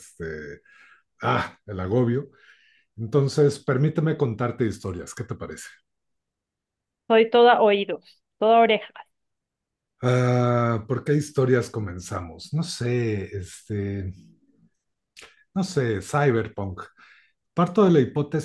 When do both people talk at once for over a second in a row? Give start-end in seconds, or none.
none